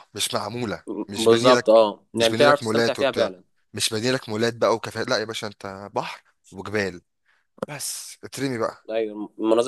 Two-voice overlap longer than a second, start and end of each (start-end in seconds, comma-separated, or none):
1.2-3.3